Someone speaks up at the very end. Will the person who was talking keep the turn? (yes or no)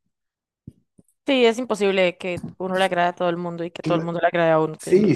no